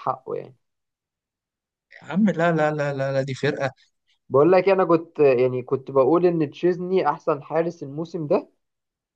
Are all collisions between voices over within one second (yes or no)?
yes